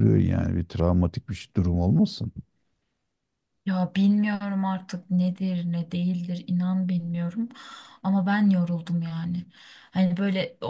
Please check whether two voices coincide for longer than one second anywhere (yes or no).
no